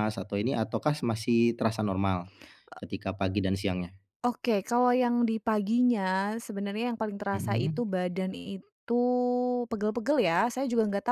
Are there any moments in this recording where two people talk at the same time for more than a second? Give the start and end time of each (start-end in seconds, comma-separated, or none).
none